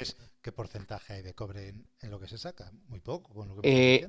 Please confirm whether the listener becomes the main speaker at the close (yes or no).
yes